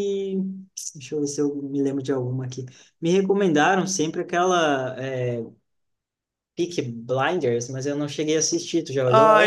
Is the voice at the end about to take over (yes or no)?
yes